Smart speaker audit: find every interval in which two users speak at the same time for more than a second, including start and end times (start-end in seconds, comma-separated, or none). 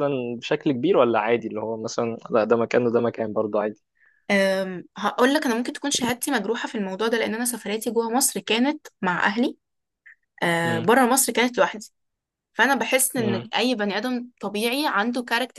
none